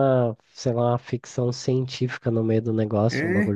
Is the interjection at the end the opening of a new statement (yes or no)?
no